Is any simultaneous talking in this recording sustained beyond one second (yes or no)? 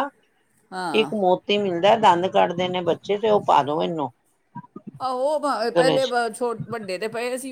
no